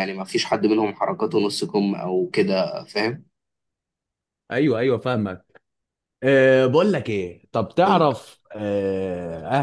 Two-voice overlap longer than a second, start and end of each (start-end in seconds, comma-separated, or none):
none